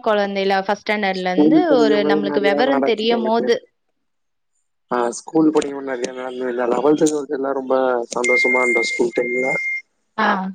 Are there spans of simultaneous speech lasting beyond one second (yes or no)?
yes